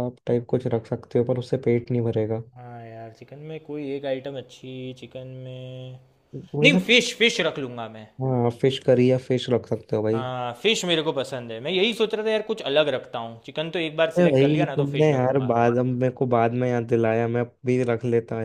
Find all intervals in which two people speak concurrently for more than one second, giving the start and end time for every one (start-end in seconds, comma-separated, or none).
14.2-15.8